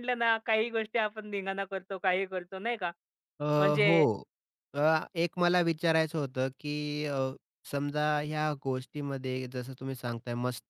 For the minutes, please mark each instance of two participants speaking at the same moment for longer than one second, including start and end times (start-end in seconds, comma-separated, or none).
none